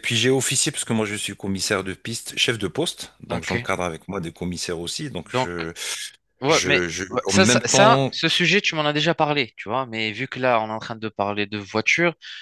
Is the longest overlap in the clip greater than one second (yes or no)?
yes